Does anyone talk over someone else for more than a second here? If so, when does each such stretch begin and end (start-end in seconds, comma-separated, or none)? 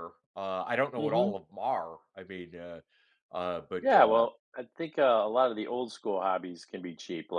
none